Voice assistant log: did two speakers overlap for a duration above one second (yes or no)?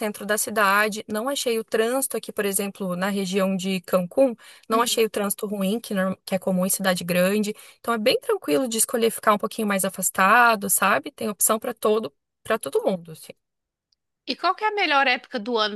no